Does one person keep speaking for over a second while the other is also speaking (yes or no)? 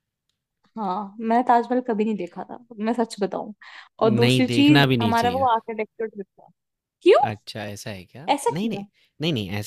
yes